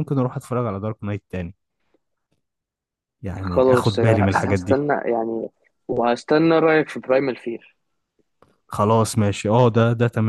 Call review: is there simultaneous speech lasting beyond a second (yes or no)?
yes